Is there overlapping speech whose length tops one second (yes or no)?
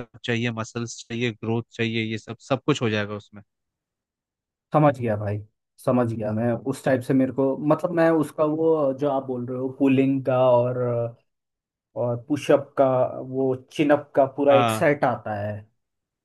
no